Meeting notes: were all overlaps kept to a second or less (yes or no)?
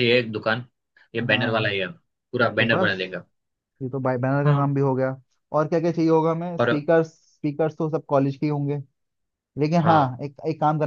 yes